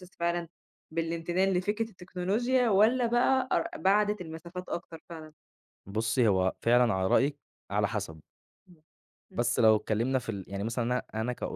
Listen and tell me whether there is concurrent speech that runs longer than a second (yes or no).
no